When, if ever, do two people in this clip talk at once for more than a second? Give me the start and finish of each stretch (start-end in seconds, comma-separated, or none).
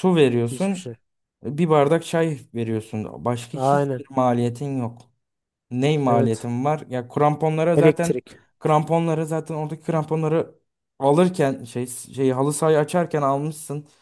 none